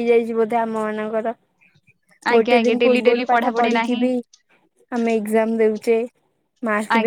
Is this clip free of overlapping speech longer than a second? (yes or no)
no